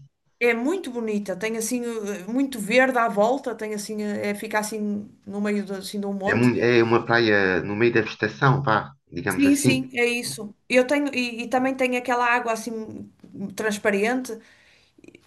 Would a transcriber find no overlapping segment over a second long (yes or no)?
yes